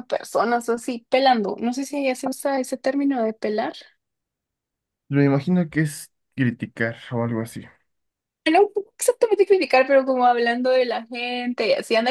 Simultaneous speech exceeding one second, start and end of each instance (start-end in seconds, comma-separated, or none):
none